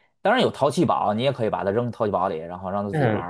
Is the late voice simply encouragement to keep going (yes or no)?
no